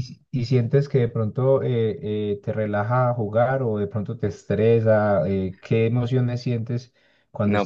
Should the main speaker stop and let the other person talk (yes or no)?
yes